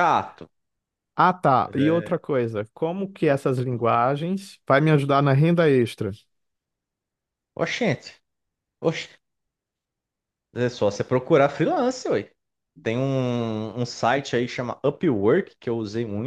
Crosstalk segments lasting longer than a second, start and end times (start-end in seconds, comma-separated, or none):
none